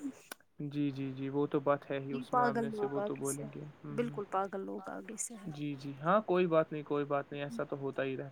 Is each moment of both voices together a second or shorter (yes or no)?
no